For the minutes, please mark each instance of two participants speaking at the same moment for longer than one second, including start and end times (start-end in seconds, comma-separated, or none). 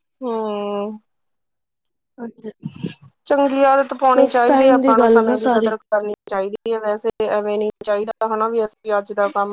4.2-5.8